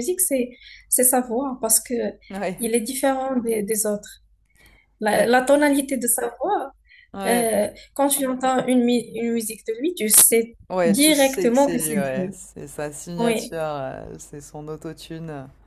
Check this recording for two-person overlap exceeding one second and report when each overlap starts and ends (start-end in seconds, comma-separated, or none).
10.7-12.3